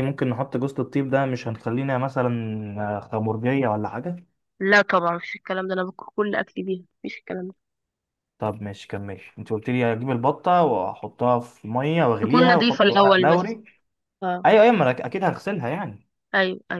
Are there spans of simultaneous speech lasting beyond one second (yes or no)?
yes